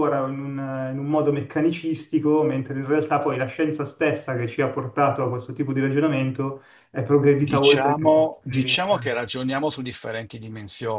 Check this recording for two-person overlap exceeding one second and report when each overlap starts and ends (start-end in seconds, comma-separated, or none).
7.4-9.2